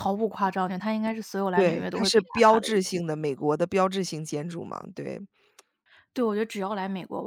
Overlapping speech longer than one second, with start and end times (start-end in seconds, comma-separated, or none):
1.5-3.0